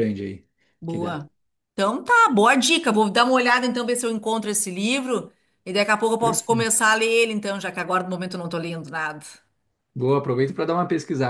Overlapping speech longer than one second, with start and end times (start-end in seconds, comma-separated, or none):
none